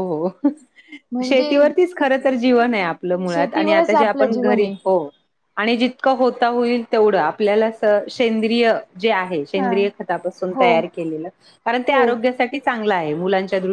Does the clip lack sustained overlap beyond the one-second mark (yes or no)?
no